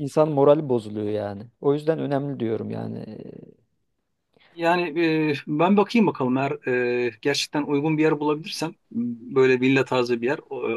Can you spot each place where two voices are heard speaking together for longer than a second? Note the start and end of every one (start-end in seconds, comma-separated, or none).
none